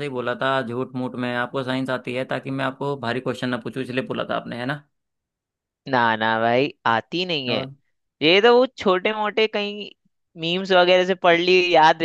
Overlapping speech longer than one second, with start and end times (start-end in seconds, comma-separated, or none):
none